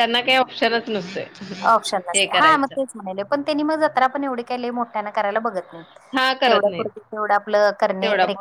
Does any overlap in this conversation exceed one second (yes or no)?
no